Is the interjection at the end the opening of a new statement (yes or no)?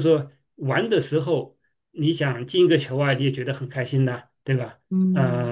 yes